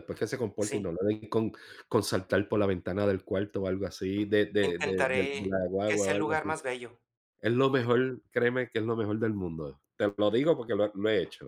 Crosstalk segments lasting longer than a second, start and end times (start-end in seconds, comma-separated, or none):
4.6-6.5